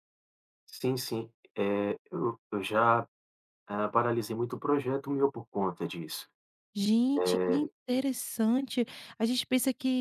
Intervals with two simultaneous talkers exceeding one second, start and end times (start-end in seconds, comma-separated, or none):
none